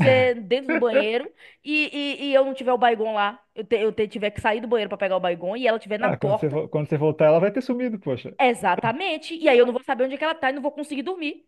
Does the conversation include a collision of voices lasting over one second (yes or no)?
no